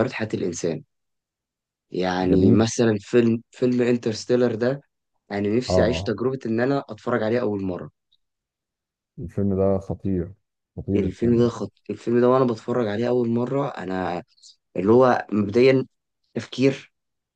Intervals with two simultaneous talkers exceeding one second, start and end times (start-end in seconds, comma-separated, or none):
none